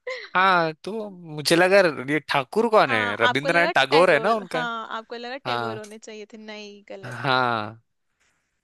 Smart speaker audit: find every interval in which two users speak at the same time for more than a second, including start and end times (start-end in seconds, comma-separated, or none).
2.9-4.6